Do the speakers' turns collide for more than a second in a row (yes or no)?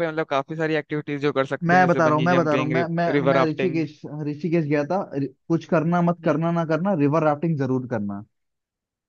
yes